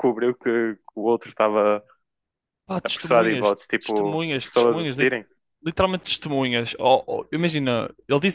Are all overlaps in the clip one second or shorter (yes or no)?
no